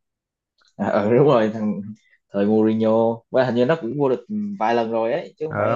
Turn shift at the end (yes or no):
yes